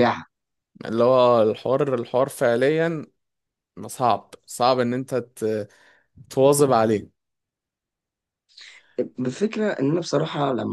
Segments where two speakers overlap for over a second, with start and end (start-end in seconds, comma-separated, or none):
none